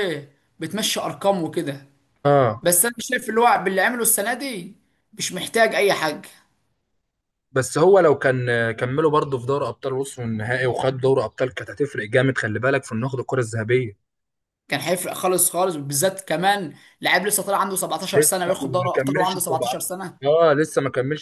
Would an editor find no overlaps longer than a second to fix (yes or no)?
no